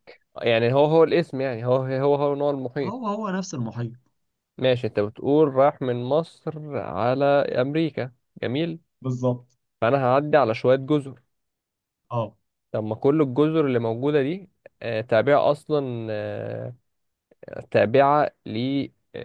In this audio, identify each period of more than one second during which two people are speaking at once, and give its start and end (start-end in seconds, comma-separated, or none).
none